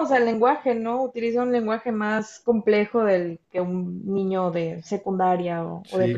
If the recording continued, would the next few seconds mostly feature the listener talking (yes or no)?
yes